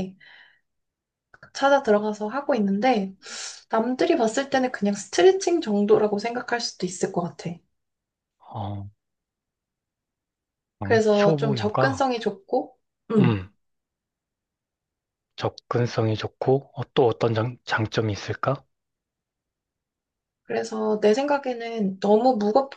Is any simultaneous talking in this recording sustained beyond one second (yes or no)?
yes